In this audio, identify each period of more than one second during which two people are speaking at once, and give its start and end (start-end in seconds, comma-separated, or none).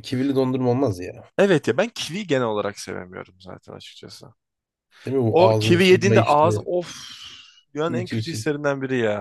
5.3-6.7